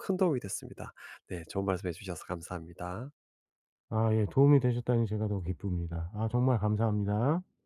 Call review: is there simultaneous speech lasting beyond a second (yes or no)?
no